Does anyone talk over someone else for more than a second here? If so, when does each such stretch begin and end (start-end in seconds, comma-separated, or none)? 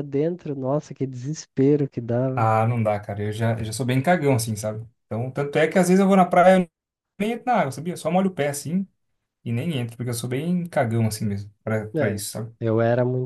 none